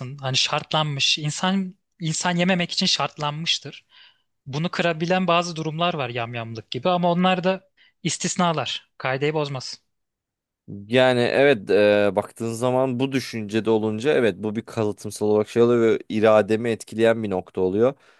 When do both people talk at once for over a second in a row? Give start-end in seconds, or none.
none